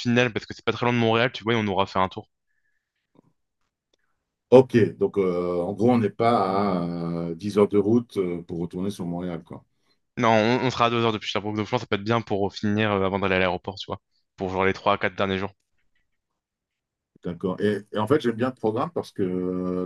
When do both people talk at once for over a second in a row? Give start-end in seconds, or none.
none